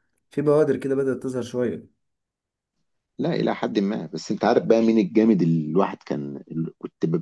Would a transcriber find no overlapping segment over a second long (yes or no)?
yes